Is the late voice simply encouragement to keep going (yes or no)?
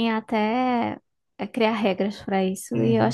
no